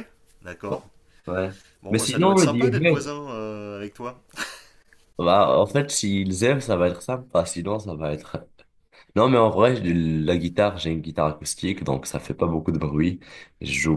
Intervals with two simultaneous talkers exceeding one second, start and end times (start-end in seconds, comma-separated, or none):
1.9-3.1